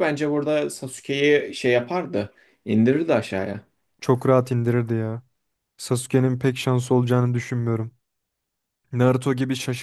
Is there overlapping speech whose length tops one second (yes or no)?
no